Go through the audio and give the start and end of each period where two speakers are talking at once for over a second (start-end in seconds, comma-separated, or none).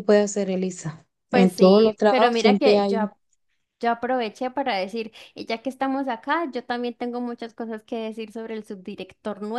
1.3-3.1